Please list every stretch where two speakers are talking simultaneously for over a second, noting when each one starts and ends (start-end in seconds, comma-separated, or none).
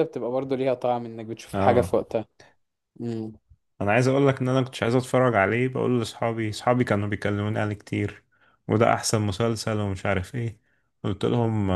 none